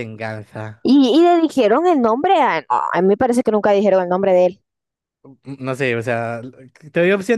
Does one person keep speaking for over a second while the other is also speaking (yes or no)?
no